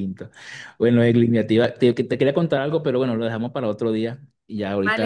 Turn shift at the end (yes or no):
yes